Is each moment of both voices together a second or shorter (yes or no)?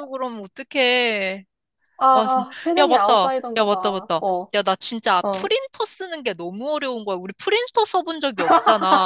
no